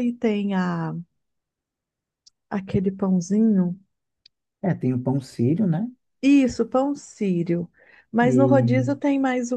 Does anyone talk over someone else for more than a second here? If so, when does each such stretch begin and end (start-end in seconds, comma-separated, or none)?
none